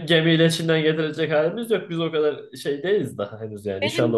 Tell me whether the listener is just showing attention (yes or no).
no